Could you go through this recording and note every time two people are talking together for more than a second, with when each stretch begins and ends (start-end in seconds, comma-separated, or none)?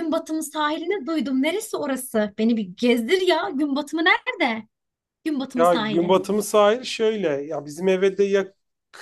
none